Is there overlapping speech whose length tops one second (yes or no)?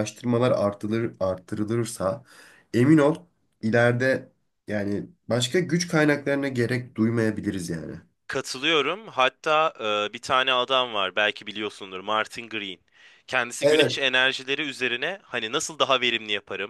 no